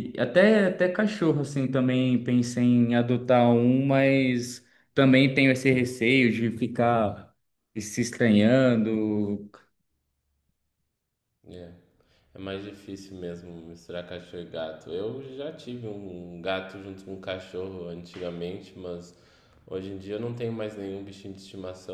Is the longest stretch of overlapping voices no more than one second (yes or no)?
yes